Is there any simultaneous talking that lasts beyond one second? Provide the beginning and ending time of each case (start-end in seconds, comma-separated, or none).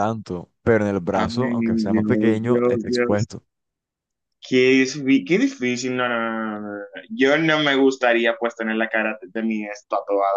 1.1-3.3